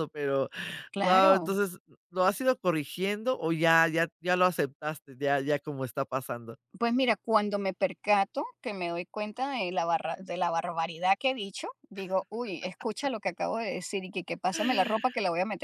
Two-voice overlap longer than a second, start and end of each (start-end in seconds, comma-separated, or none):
none